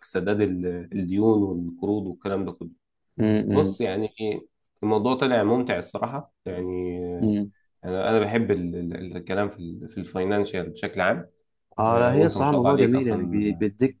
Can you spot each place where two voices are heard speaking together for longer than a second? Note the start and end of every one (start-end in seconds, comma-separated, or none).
11.9-13.4